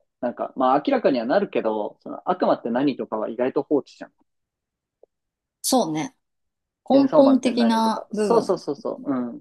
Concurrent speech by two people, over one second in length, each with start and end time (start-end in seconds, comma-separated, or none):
6.9-8.6